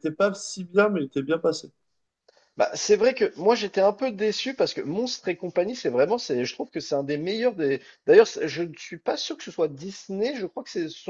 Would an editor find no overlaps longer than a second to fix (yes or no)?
yes